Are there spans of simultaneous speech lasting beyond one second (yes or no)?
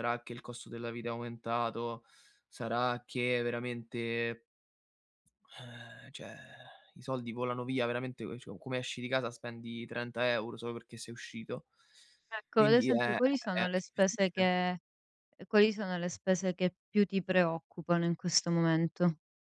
yes